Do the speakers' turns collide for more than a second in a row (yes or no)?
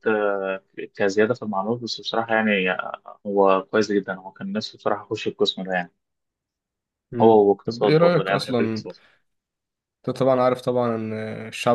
yes